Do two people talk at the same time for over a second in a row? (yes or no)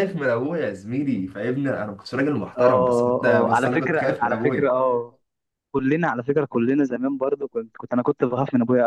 yes